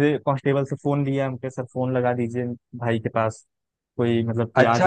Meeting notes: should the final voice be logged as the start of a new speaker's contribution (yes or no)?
yes